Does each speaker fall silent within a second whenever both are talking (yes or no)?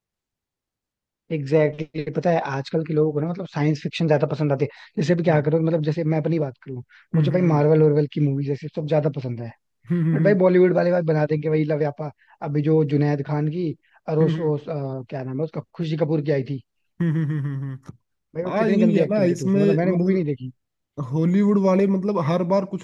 no